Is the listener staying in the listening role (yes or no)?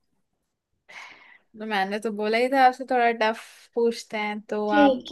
no